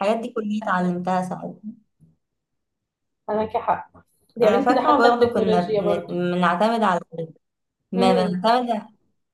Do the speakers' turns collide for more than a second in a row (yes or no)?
yes